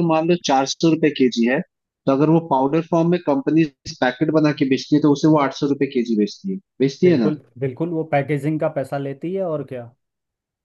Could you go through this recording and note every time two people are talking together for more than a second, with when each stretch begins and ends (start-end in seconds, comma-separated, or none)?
none